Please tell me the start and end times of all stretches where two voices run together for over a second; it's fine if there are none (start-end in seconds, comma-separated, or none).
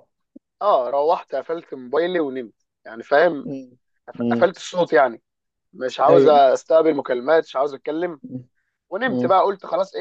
none